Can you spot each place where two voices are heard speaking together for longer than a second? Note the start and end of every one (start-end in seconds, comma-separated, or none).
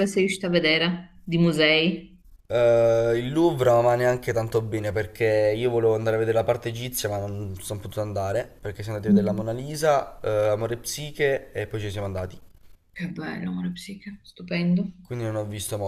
none